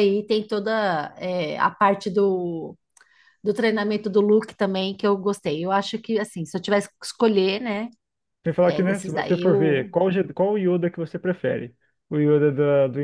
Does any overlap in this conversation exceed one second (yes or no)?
yes